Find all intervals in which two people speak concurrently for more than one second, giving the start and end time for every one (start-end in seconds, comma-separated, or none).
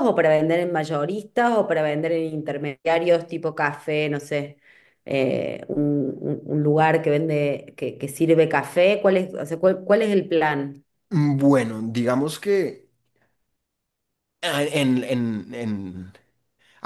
none